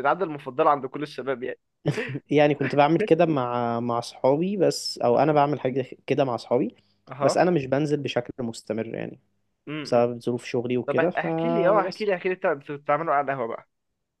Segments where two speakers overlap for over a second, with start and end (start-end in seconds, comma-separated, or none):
10.9-12.1